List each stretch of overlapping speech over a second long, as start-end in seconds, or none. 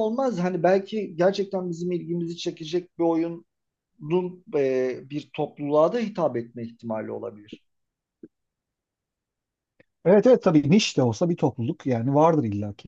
none